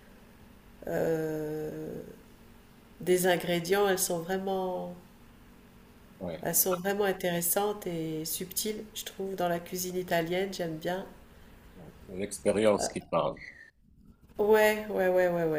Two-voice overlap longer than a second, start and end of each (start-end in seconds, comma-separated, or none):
none